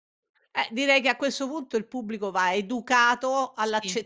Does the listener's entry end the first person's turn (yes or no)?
no